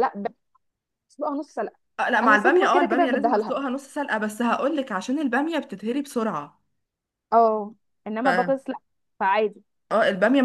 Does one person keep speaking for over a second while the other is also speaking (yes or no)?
yes